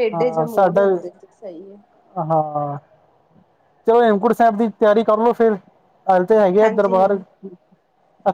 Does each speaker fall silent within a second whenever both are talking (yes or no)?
yes